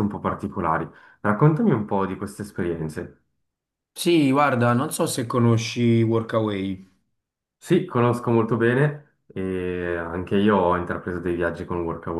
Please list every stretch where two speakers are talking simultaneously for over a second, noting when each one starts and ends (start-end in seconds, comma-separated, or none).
none